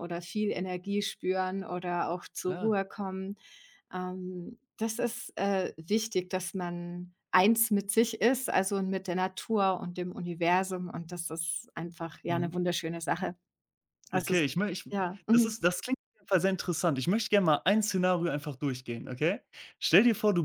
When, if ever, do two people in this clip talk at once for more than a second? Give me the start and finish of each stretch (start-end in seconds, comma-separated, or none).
none